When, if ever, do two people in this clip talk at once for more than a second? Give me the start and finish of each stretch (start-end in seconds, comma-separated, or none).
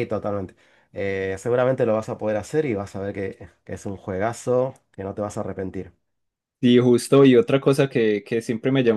none